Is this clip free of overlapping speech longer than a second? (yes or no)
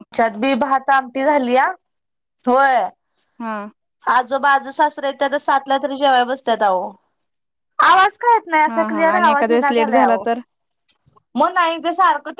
no